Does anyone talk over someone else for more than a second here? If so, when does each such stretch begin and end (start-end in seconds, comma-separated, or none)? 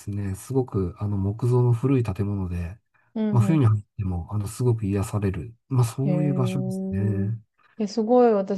6.0-7.3